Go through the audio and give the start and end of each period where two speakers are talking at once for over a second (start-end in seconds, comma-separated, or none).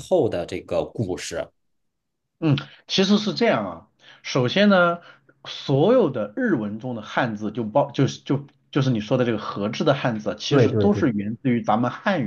none